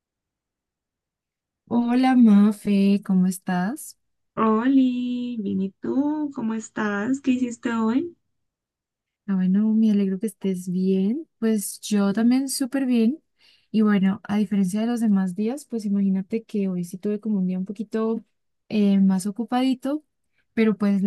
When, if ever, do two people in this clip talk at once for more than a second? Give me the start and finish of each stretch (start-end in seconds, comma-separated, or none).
none